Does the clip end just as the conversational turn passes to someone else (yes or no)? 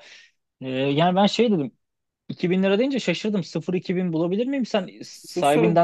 yes